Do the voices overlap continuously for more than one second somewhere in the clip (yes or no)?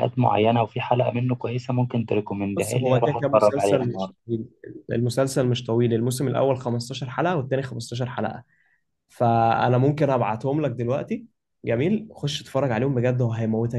yes